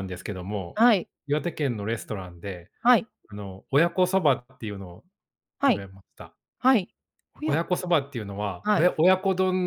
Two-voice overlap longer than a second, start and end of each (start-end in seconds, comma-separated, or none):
none